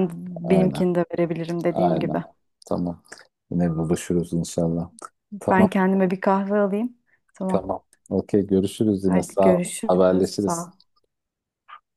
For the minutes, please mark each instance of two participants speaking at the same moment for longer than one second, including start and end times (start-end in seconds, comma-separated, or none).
9.1-10.7